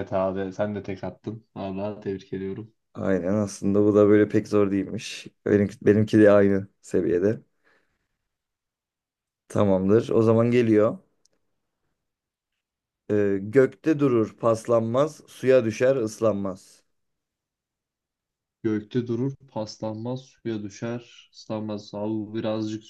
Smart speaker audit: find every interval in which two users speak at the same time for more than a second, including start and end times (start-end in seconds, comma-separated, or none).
none